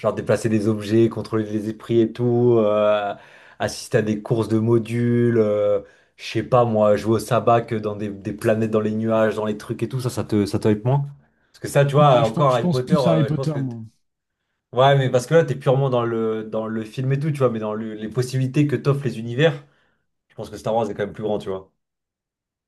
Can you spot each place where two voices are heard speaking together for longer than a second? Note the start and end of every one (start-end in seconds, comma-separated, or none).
11.9-13.8